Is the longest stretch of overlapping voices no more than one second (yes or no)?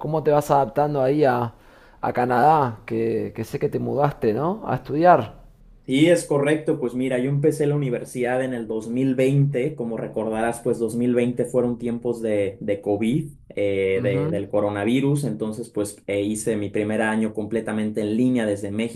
yes